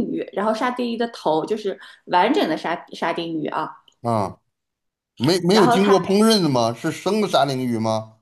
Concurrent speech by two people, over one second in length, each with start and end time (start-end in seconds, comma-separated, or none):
none